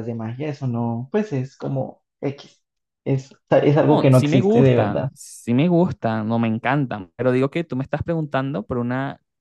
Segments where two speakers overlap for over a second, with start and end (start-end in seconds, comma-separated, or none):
3.9-5.1